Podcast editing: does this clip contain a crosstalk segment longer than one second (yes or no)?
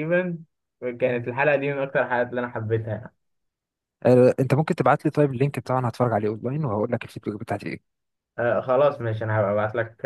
no